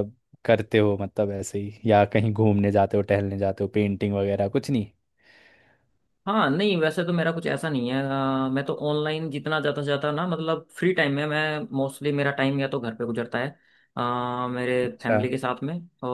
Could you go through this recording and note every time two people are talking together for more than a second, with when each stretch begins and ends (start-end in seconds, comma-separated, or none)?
none